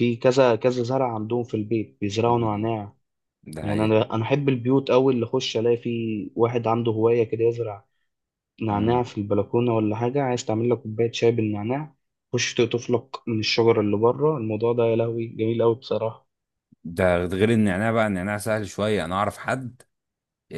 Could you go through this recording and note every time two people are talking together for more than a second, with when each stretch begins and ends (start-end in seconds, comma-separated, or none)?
none